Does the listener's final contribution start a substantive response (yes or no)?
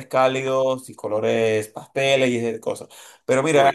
no